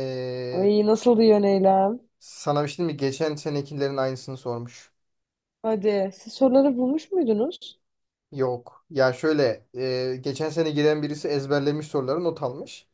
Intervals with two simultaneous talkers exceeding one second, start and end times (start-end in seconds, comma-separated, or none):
none